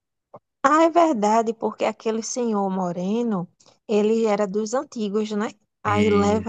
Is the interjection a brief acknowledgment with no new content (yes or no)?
yes